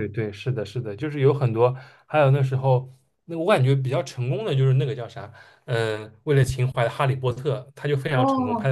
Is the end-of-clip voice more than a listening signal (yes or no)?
yes